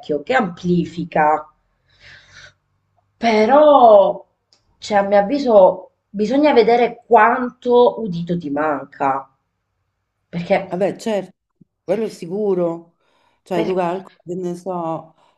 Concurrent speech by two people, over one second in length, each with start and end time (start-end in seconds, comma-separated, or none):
none